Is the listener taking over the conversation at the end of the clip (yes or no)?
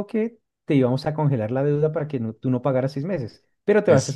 no